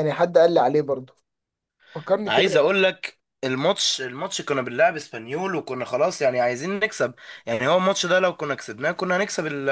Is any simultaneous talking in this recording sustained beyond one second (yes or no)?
no